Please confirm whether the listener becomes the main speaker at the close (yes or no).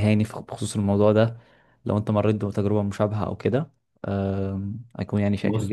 yes